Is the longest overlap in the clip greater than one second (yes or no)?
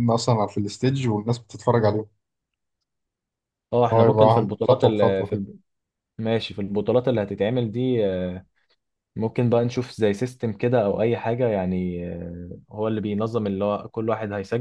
yes